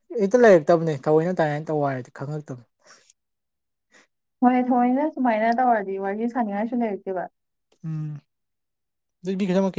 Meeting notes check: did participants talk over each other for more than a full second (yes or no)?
no